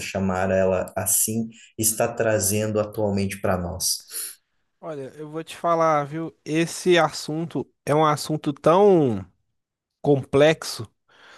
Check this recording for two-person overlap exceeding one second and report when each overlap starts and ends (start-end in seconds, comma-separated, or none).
none